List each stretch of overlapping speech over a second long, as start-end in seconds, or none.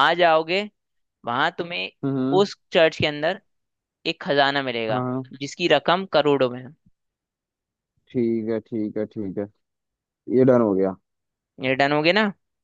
none